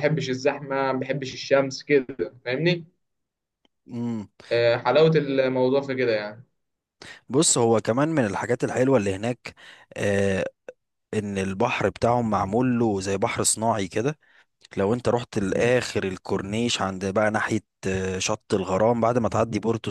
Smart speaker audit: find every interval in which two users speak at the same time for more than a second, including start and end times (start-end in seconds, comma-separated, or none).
none